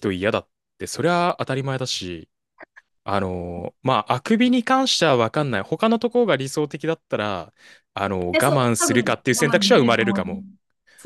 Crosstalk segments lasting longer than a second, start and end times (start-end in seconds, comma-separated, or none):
8.3-10.4